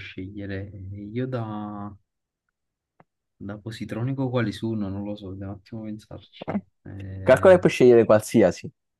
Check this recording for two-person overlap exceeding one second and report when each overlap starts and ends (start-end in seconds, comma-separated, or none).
none